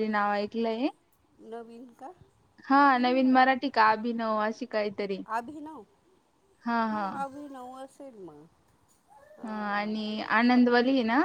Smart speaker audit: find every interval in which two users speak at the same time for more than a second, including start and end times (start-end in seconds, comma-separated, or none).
none